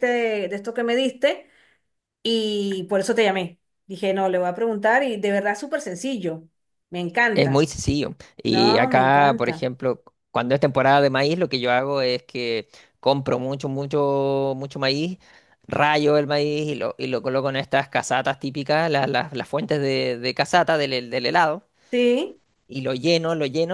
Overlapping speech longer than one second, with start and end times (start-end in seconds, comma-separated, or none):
8.5-9.7